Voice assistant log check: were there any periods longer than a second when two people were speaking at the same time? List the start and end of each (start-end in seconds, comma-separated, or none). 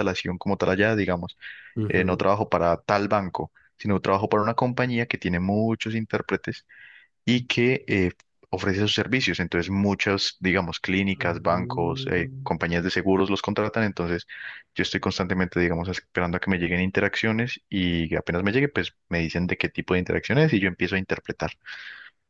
11.2-12.5